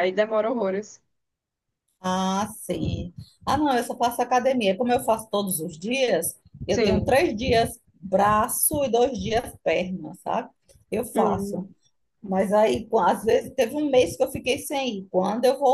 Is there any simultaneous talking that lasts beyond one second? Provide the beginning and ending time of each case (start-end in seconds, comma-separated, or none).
none